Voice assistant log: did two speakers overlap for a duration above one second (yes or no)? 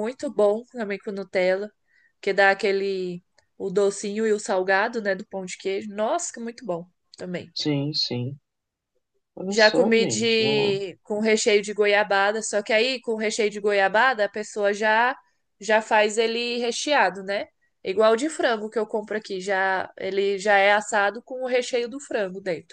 yes